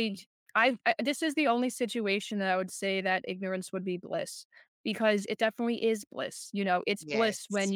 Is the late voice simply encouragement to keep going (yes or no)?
yes